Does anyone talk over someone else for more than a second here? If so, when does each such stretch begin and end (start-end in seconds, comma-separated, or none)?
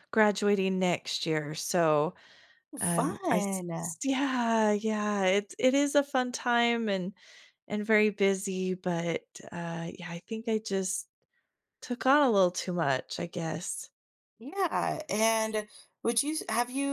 none